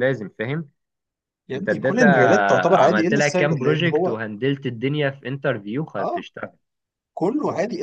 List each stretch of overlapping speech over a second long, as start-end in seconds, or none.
2.7-4.2